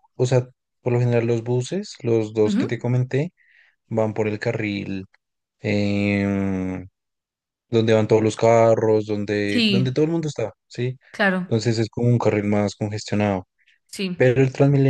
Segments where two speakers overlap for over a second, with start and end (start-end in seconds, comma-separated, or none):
none